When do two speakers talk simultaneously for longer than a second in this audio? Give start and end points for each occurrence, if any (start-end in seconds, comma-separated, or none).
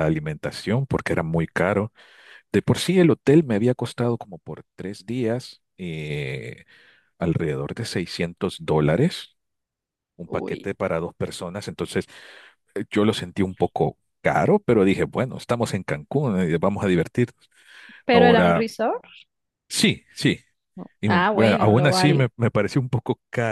21.0-22.3